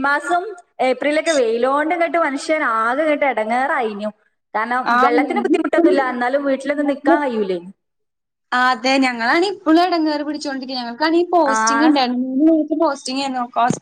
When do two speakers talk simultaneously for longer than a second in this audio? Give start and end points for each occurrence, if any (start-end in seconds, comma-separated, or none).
none